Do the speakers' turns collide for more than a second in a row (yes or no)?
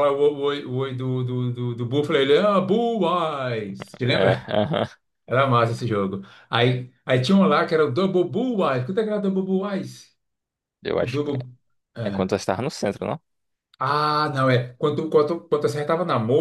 no